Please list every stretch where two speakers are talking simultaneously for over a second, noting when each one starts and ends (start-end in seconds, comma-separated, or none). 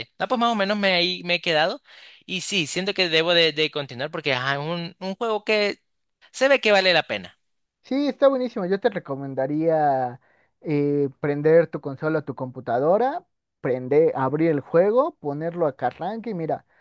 none